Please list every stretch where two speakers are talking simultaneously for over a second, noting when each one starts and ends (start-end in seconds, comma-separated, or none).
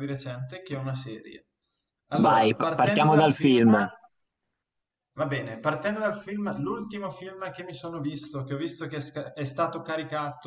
2.1-3.6